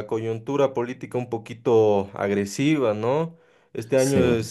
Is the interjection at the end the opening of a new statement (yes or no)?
no